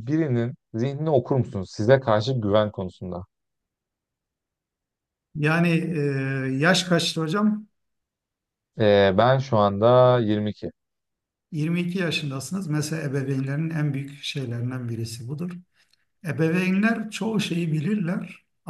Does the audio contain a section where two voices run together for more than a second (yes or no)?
no